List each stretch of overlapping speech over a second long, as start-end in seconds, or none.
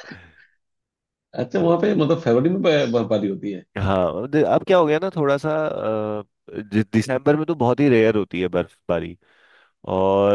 none